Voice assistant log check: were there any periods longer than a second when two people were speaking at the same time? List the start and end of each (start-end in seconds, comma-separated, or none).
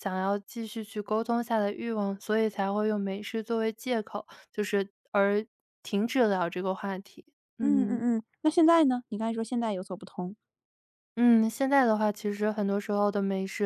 none